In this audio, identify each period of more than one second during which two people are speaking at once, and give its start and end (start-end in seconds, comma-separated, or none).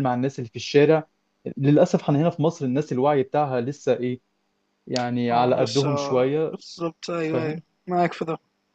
none